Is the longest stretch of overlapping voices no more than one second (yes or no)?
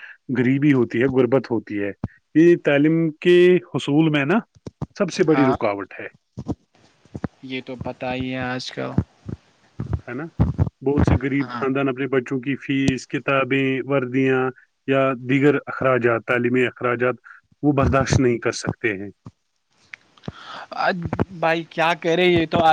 yes